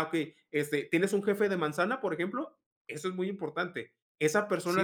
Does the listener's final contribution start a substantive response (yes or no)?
yes